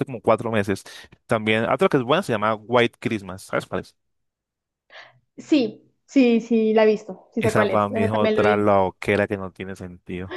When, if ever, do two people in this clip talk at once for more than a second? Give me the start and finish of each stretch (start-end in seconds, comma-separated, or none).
7.4-8.7